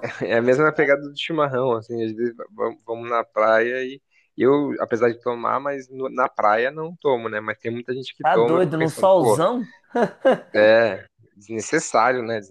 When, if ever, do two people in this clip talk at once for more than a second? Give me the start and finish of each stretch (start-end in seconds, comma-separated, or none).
8.2-9.4